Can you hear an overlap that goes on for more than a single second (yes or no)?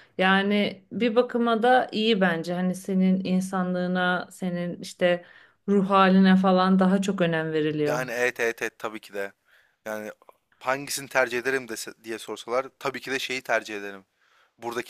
no